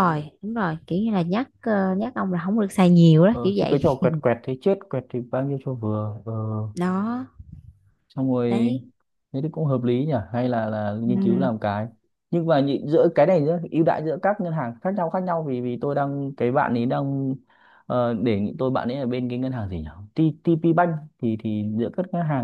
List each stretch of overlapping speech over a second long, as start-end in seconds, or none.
none